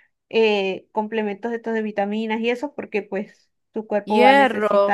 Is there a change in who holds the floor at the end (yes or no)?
yes